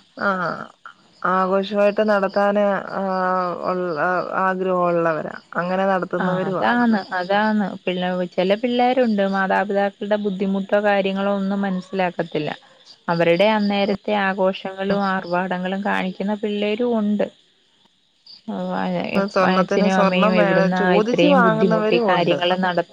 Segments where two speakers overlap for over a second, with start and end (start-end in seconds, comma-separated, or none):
19.6-22.4